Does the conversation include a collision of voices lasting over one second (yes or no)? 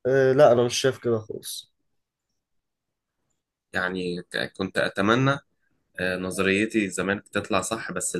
no